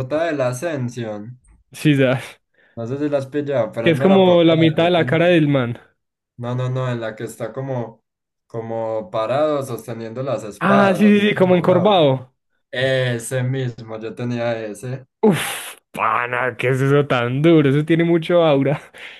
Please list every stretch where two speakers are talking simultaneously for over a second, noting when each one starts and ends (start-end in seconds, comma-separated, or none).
3.8-5.2, 10.6-12.0